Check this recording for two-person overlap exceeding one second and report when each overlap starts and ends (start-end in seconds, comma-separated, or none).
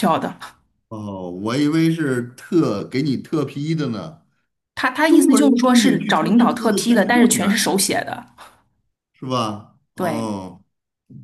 5.1-7.7